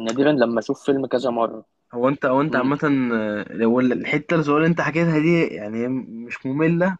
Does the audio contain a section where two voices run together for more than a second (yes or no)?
no